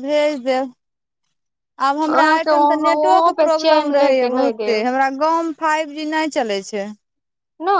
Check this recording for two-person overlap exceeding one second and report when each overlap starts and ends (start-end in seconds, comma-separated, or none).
2.1-4.8